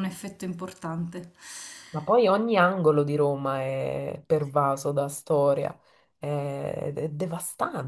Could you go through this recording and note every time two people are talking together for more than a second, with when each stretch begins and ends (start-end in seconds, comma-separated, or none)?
none